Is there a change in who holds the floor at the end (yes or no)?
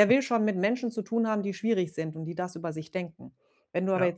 no